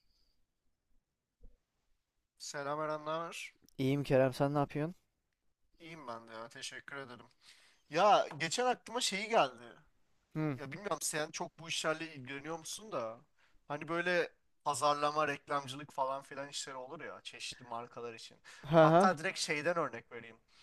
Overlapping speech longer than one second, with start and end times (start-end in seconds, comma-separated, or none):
none